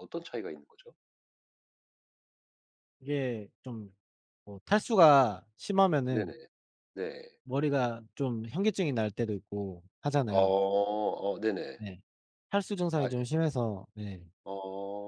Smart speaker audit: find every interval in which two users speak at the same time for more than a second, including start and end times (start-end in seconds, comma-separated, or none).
none